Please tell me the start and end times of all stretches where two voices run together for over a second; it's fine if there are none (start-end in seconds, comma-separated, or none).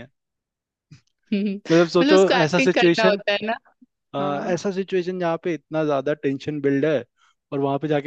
1.7-3.2